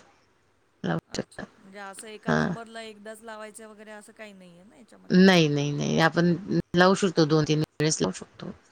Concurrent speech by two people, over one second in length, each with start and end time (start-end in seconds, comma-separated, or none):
none